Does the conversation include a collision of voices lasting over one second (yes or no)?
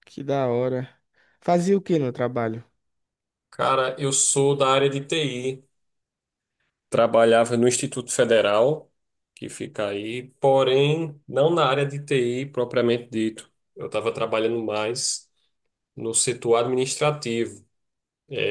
no